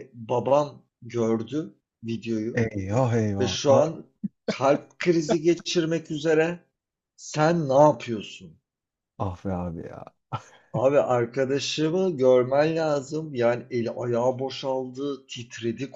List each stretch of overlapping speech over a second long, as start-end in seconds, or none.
none